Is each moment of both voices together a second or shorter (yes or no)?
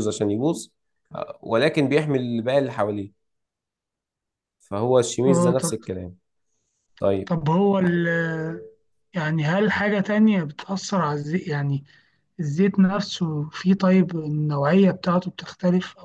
yes